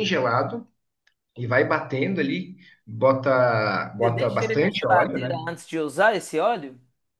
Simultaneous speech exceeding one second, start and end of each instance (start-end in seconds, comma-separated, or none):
4.0-5.4